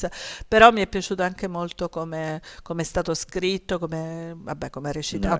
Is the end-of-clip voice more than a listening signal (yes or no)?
no